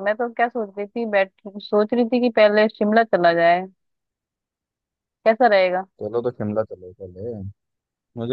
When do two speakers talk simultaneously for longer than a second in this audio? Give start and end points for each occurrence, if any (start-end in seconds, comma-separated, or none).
none